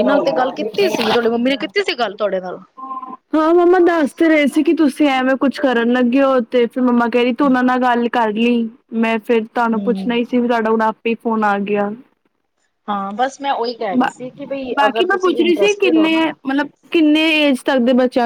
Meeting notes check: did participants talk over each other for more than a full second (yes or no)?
yes